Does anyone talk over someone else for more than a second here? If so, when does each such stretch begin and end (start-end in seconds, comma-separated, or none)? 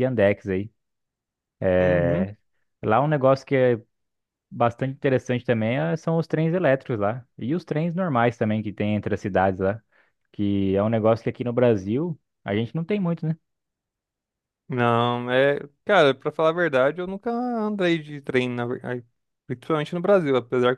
none